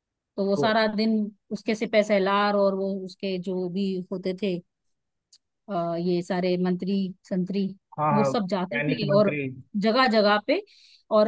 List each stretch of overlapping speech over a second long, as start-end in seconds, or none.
8.1-9.4